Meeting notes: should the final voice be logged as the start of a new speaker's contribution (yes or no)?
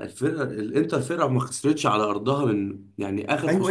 yes